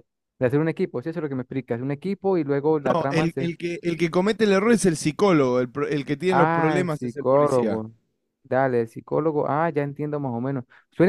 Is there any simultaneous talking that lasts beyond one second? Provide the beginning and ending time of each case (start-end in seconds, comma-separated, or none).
6.3-7.8